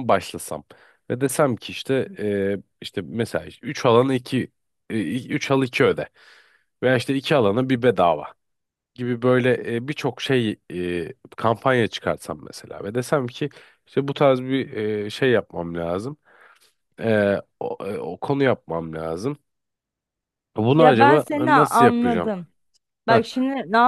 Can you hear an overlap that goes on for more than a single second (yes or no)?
yes